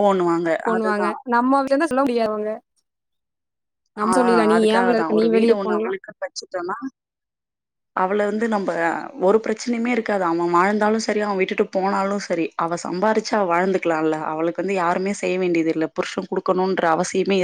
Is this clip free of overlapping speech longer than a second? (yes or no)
yes